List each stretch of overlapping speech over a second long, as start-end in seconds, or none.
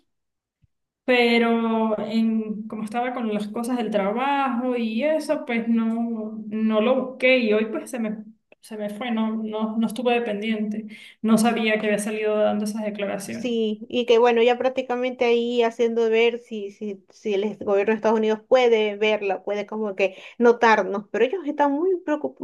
none